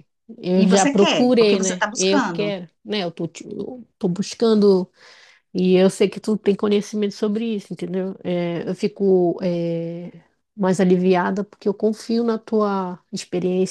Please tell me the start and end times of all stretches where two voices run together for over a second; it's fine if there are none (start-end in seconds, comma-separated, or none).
0.6-2.5